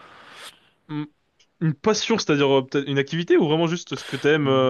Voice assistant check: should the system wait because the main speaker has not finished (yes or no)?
no